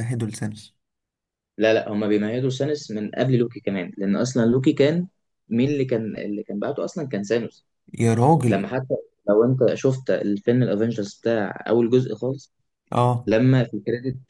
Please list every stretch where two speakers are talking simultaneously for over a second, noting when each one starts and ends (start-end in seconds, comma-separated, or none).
none